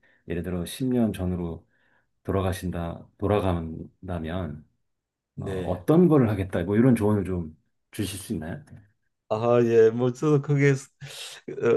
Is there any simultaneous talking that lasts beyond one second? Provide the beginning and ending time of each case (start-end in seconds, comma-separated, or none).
none